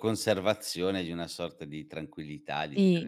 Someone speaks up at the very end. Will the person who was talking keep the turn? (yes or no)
no